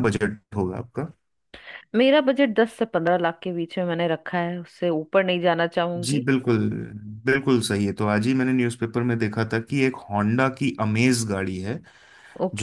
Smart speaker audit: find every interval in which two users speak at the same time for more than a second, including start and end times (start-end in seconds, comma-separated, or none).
none